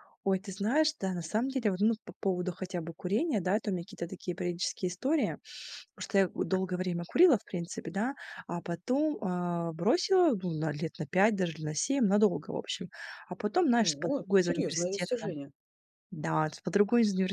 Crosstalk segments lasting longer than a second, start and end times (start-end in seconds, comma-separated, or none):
13.8-15.3